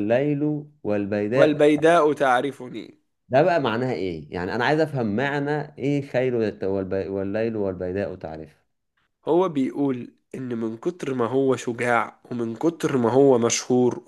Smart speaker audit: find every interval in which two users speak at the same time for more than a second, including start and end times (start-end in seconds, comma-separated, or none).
none